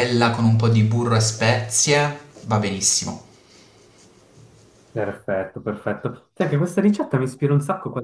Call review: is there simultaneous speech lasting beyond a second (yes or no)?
no